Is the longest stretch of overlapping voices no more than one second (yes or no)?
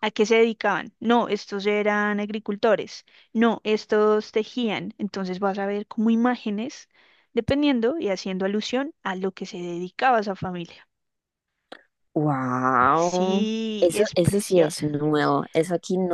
no